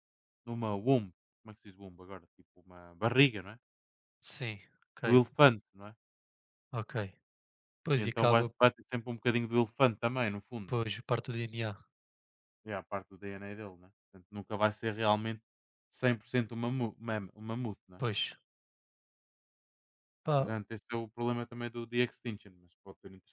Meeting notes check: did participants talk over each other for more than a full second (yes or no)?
no